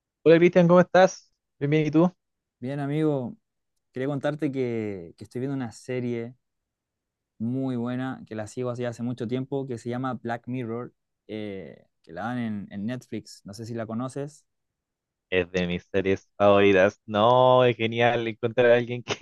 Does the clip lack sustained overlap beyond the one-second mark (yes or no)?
yes